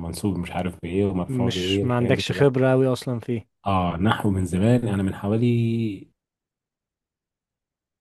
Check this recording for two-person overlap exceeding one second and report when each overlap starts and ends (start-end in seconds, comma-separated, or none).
1.3-2.5